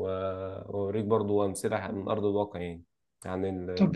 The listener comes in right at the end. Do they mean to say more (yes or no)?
yes